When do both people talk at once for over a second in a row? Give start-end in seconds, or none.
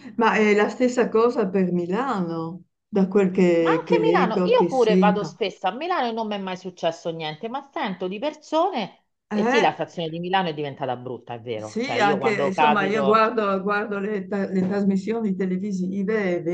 3.6-5.4, 11.6-13.2